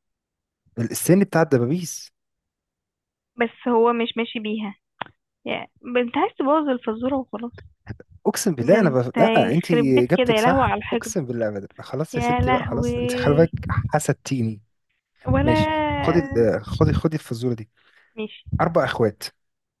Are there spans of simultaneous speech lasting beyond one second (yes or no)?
yes